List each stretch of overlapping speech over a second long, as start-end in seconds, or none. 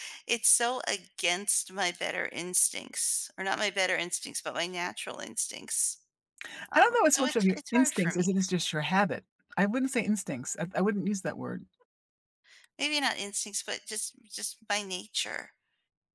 6.8-8.2